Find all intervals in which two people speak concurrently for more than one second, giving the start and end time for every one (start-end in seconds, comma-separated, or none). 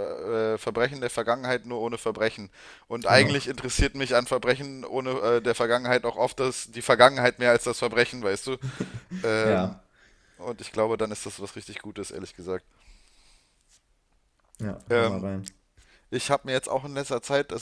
none